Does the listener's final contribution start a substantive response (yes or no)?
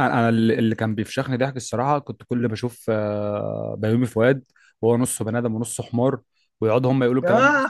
no